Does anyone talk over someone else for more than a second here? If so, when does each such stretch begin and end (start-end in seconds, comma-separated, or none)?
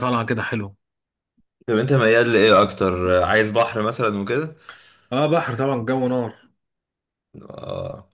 none